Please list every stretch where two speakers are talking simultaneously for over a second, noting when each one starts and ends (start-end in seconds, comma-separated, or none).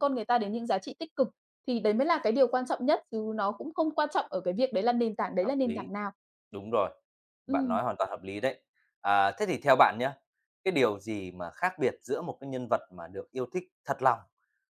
none